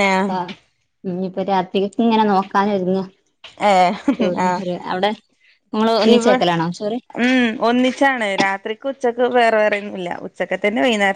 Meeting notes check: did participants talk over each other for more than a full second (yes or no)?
no